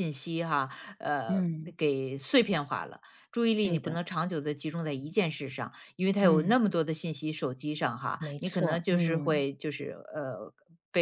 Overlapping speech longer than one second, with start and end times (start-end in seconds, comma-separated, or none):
8.2-9.5